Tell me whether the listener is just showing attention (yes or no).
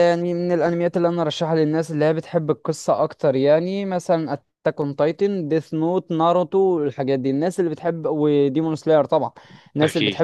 yes